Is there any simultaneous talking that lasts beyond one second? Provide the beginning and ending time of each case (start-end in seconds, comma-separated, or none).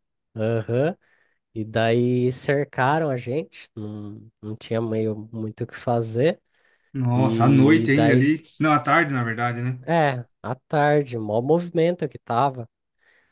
7.1-8.4